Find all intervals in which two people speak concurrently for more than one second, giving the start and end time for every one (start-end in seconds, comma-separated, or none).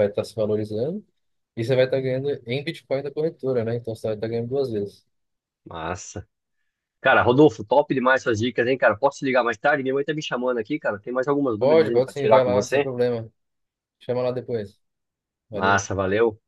11.6-12.9